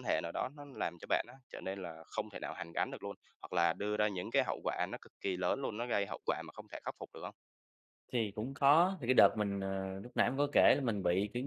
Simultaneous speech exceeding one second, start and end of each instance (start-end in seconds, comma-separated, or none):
none